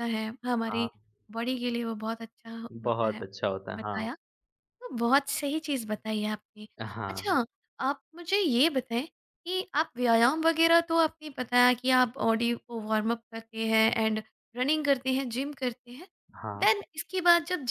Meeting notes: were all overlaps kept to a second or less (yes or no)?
no